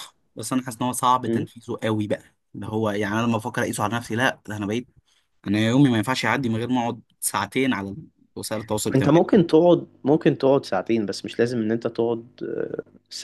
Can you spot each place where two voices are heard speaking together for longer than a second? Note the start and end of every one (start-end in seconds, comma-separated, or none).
none